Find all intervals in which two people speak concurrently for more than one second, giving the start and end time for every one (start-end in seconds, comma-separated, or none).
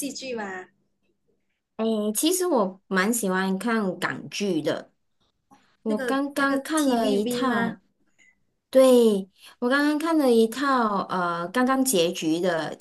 5.8-7.8